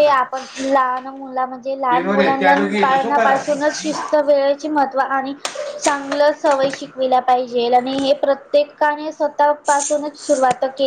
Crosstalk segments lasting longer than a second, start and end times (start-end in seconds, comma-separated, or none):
1.7-3.6